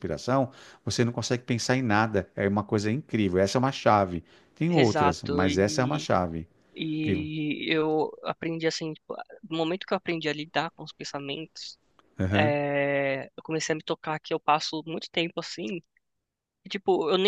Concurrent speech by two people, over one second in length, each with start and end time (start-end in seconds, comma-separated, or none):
4.7-6.1